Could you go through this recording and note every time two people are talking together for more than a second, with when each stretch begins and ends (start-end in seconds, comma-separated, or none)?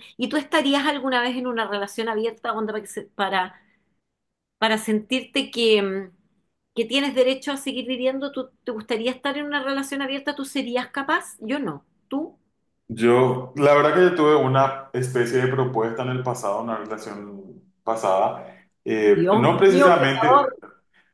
19.1-20.6